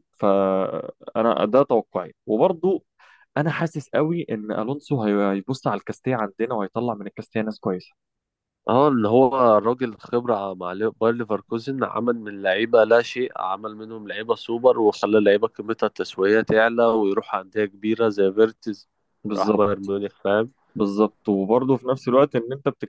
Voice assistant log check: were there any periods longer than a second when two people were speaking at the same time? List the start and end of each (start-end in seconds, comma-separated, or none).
none